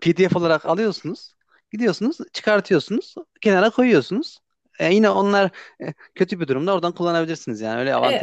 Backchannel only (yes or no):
no